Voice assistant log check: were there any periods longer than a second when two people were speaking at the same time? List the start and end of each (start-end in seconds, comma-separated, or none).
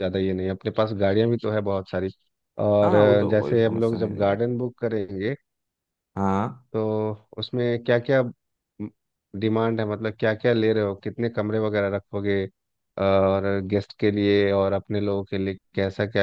2.8-4.4